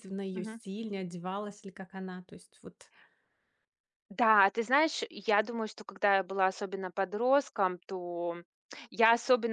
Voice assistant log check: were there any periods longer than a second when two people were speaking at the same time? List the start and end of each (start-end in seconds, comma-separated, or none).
none